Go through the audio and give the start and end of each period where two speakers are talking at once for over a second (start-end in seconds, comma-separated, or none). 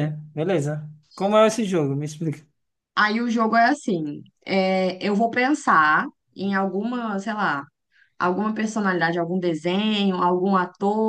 none